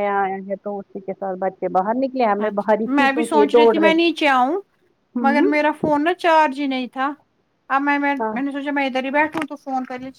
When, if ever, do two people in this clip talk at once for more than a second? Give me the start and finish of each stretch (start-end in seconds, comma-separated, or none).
none